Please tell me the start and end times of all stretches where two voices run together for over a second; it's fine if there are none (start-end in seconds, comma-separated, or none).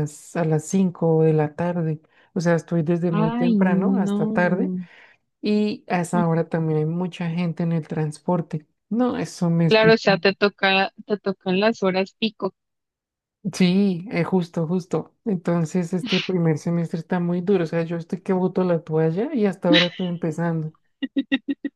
3.1-4.7